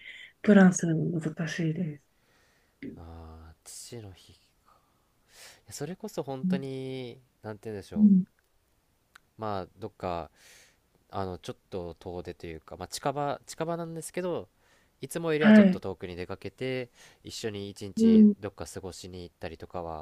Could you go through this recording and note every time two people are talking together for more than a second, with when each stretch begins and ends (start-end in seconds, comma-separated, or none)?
none